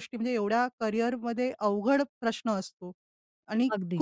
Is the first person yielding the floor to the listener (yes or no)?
no